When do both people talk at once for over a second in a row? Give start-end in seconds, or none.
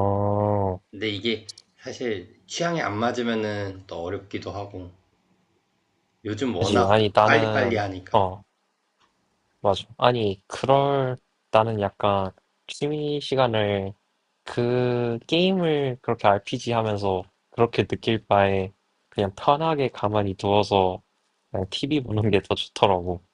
6.6-8.2